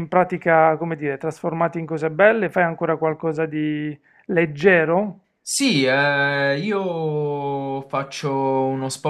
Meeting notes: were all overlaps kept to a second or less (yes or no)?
yes